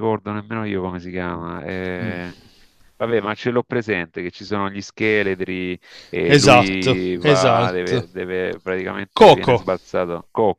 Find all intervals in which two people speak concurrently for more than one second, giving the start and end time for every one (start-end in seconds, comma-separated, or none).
6.3-8.1